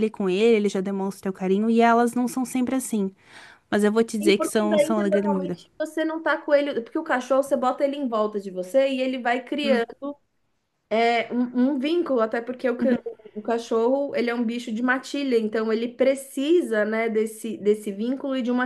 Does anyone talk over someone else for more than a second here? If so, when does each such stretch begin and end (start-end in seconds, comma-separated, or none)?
4.2-5.6